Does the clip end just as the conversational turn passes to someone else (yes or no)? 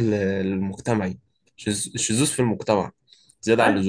yes